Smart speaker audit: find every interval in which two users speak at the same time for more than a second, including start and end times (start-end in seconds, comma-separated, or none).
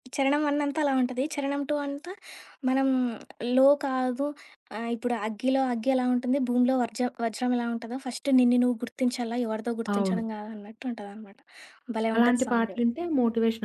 none